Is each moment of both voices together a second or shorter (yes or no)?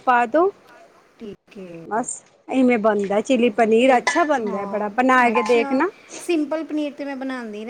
yes